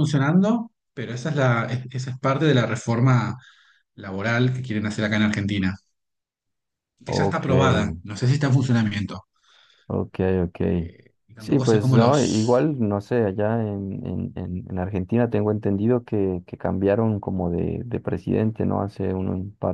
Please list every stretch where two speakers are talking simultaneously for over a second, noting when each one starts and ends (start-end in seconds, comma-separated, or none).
11.4-12.7